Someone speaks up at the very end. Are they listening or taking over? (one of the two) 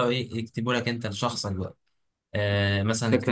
listening